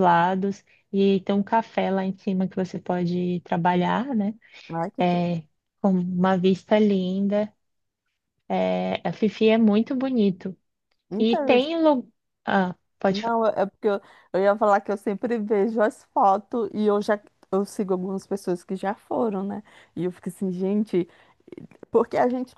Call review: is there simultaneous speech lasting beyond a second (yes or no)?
no